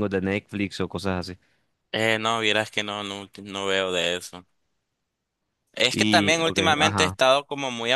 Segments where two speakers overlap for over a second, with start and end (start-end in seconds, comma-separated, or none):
5.9-7.2